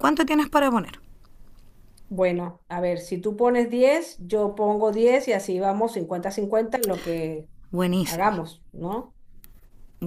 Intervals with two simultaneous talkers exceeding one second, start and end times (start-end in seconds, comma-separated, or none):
none